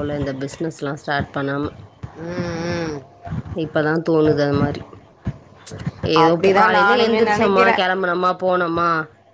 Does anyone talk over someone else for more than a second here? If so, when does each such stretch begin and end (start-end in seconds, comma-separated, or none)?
6.2-7.8